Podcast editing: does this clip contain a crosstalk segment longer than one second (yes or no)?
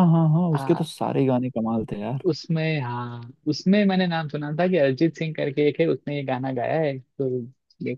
no